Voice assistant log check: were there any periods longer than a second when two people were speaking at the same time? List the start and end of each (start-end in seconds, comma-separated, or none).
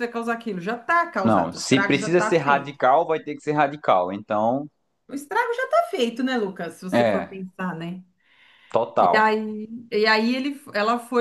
1.2-2.8